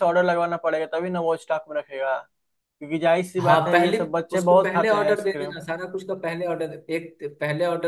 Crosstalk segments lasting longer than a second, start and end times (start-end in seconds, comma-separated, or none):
3.4-5.5